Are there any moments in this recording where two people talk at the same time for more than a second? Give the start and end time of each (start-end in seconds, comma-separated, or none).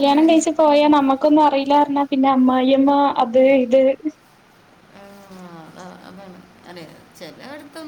none